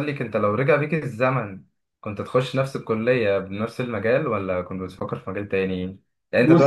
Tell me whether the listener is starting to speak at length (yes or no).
no